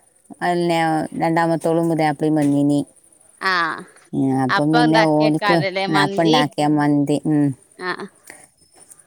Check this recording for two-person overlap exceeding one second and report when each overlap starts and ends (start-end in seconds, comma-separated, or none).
4.6-6.4